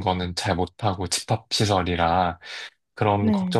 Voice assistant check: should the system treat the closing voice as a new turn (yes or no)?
no